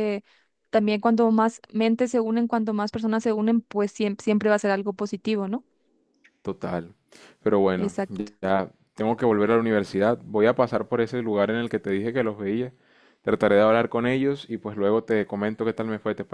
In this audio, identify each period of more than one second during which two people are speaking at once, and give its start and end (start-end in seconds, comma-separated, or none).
none